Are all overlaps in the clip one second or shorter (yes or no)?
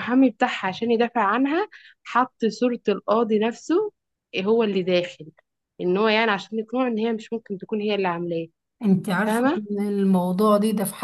yes